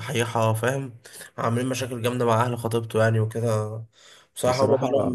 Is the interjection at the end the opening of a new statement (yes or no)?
no